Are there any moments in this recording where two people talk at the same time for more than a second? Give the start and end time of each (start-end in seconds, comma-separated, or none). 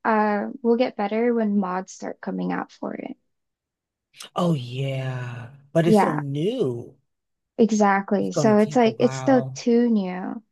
8.2-9.6